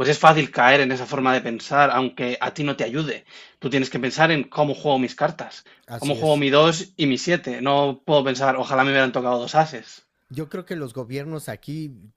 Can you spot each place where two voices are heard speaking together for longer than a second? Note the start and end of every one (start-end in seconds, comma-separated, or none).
none